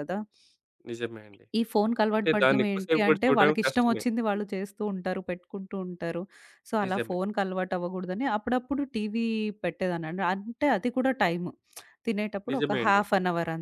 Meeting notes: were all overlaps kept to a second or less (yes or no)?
no